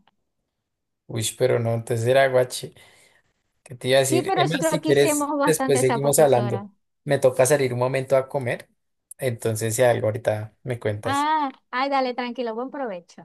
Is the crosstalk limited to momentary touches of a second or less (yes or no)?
no